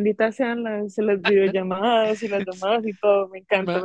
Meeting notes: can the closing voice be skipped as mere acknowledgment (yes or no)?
no